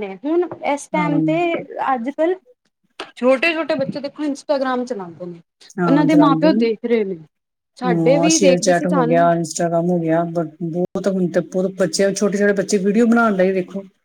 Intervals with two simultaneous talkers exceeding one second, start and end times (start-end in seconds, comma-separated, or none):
7.8-9.3